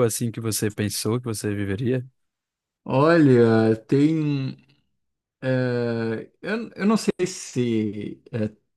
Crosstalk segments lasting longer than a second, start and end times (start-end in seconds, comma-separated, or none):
none